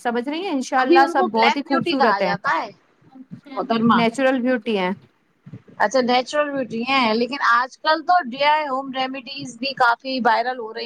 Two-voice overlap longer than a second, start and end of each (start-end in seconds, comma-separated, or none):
0.8-2.3